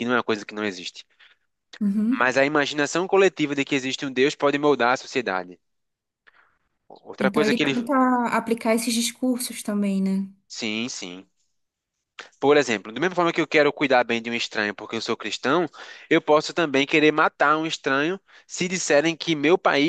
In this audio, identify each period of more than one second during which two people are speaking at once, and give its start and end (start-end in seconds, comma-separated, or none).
none